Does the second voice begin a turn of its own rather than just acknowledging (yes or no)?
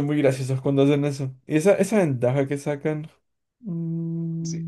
yes